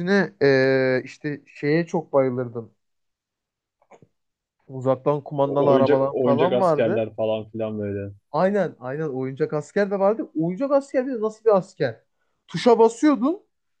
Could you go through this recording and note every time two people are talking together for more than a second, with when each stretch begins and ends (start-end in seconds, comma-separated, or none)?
5.5-7.1